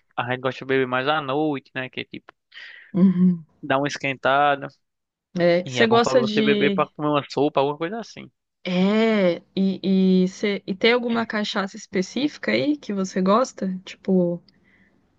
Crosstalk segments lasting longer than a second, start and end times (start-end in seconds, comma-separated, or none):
5.6-6.9